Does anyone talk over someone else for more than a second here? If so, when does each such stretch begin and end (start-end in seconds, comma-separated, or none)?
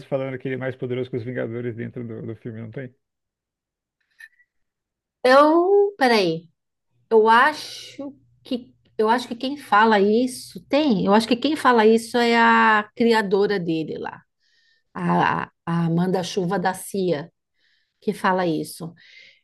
none